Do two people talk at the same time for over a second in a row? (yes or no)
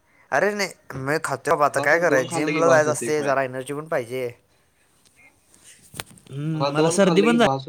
yes